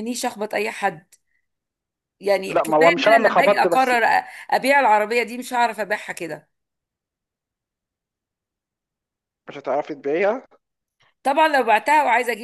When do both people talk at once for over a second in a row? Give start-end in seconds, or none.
2.5-3.9